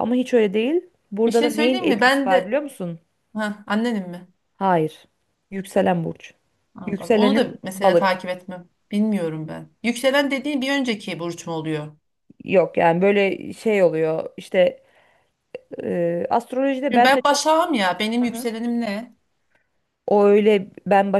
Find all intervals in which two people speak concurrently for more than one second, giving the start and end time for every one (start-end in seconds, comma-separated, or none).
1.3-2.6, 6.9-8.2